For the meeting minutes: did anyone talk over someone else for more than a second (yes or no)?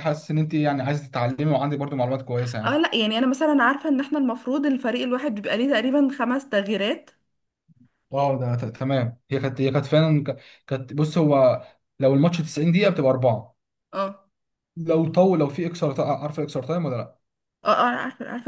no